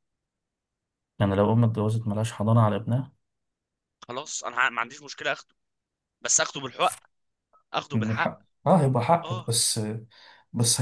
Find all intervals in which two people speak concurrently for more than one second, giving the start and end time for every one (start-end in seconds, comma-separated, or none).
none